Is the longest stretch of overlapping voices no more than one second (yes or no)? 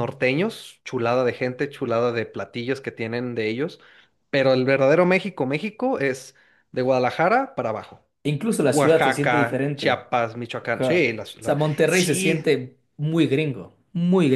no